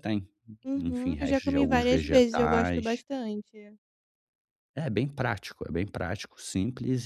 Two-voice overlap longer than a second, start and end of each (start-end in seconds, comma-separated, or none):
0.8-3.0